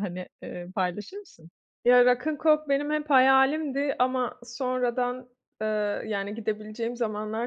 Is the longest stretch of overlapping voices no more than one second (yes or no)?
yes